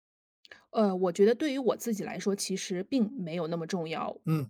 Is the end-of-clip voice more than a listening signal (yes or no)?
yes